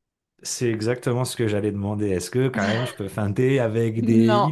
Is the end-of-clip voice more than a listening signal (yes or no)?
no